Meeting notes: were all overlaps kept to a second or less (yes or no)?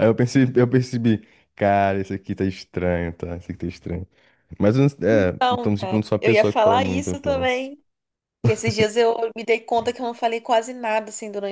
no